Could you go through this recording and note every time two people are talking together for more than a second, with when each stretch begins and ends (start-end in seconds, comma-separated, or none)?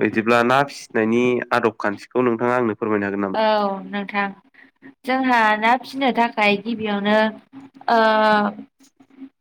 none